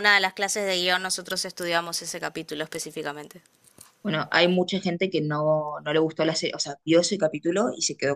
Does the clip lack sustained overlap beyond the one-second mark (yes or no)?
yes